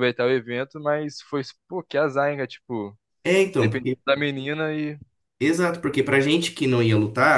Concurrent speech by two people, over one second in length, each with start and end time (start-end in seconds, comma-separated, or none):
none